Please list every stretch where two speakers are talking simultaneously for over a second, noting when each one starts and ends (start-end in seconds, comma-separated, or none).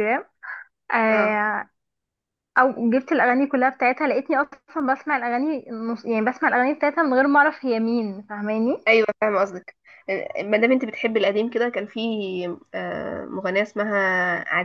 none